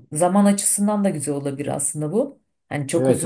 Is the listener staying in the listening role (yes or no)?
no